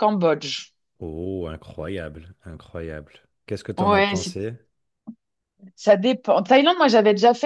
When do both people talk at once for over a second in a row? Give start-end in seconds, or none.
none